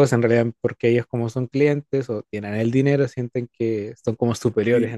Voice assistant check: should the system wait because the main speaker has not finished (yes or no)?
no